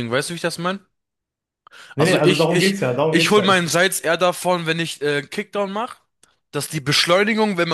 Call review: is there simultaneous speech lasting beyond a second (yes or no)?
yes